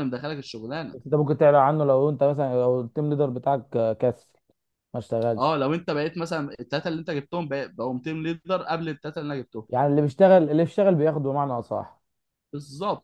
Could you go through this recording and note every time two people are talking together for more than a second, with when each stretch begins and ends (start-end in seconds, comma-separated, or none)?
none